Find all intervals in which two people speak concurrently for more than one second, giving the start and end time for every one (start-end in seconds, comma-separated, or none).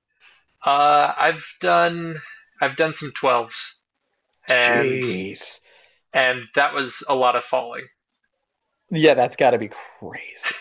none